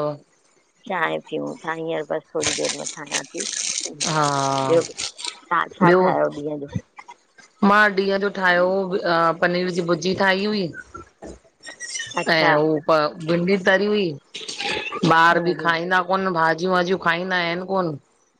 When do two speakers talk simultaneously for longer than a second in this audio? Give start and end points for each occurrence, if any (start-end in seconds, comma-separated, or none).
none